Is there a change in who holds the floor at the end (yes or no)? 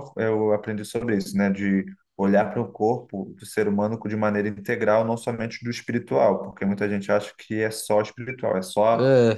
no